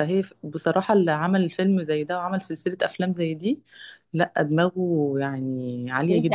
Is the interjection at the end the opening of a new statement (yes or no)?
yes